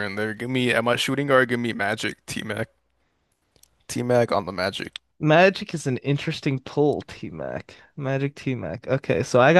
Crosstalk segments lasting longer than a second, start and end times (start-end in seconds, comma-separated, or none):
none